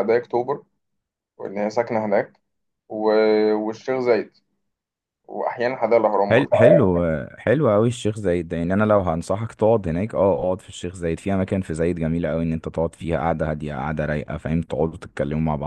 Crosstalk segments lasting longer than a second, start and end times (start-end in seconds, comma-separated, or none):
none